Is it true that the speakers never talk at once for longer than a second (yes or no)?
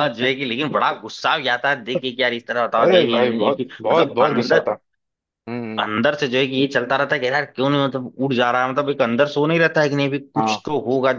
no